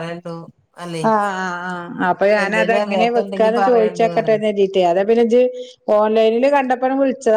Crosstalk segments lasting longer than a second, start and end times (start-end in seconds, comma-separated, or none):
2.4-4.3